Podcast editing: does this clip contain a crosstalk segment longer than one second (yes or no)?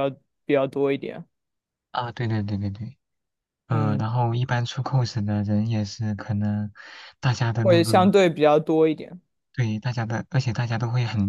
no